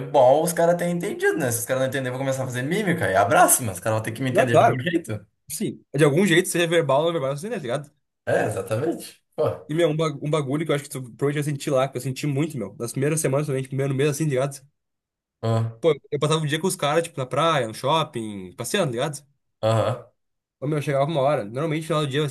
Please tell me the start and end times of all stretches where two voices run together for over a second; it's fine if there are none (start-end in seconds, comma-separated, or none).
none